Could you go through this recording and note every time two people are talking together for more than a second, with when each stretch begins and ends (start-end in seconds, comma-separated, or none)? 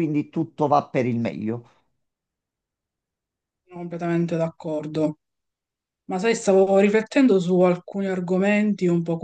none